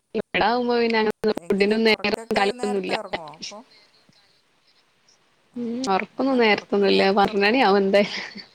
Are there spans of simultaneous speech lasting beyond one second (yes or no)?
yes